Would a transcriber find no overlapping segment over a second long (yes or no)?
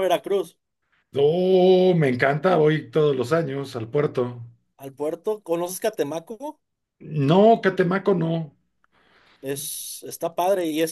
yes